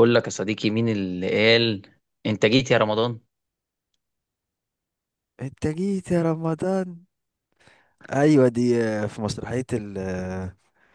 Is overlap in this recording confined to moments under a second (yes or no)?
yes